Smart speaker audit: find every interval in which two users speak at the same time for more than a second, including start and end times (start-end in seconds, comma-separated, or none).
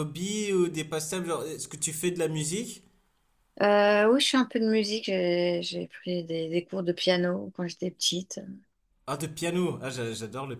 none